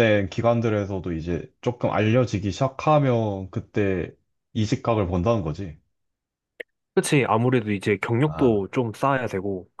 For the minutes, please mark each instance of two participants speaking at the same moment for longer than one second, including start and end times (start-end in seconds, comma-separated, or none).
none